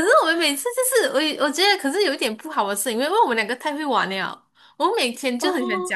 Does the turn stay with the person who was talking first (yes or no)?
yes